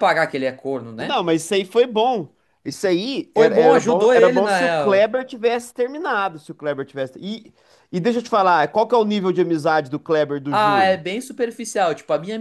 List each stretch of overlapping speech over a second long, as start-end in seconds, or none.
3.3-5.1